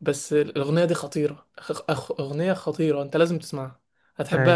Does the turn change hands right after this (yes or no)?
no